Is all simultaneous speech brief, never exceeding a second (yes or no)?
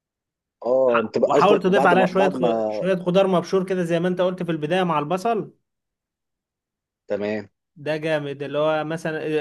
no